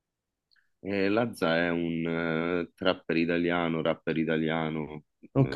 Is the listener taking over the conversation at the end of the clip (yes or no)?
yes